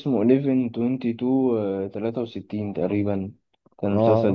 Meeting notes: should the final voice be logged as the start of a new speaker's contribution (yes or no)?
yes